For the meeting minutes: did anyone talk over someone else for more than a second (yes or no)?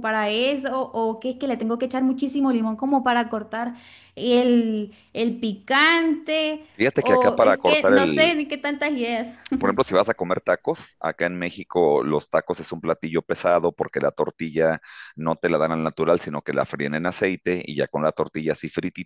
yes